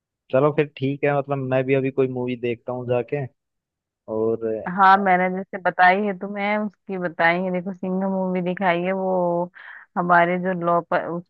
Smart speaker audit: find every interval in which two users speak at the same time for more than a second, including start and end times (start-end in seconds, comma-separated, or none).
none